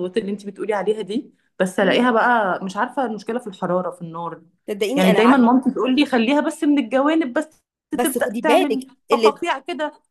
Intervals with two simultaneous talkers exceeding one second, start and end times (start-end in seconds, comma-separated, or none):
7.9-9.4